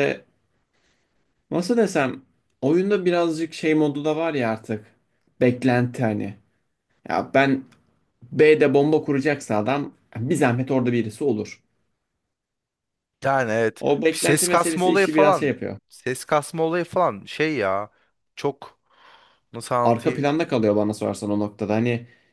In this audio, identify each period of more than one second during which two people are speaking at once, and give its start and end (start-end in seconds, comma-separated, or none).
13.8-15.5